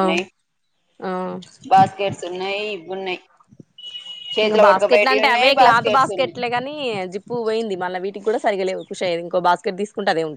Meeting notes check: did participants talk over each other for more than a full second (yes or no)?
yes